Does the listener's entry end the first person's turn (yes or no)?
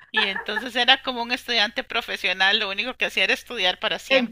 yes